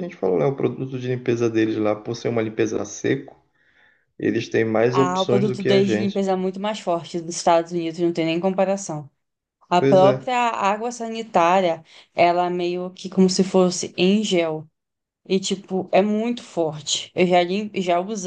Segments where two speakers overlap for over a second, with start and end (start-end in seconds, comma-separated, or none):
4.9-6.3